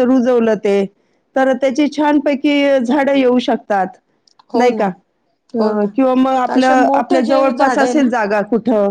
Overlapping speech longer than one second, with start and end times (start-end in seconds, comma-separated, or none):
6.5-8.1